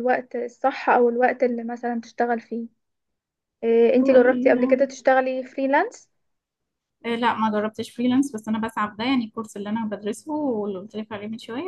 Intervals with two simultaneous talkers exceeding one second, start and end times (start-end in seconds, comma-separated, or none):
none